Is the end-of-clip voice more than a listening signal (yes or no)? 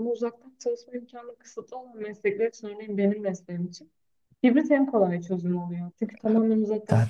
yes